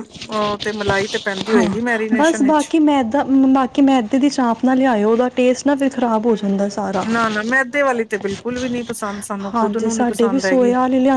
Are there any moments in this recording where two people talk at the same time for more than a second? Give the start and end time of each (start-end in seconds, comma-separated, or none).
none